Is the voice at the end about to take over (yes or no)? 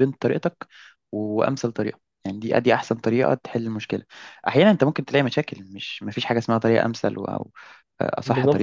yes